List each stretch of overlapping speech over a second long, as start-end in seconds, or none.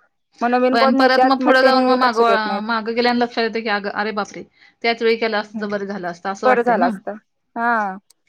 none